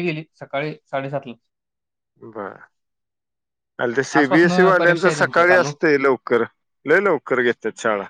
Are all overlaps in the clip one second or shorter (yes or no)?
no